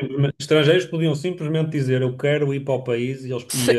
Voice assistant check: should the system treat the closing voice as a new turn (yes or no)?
yes